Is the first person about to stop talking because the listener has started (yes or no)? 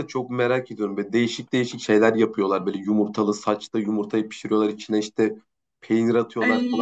no